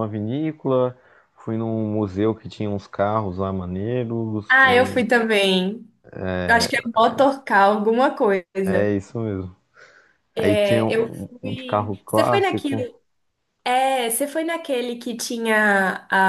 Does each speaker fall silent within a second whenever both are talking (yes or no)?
no